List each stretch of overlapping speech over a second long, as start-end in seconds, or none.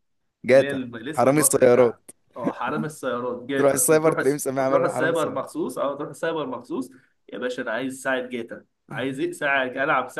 0.5-2.0, 3.5-5.5